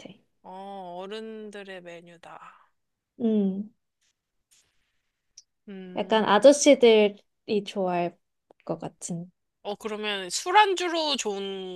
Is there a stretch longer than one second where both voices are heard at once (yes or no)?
no